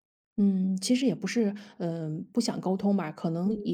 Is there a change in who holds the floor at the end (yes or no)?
no